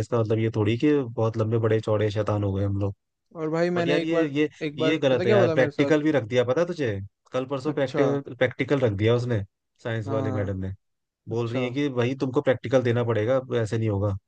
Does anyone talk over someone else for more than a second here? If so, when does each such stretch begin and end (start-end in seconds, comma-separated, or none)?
3.8-5.9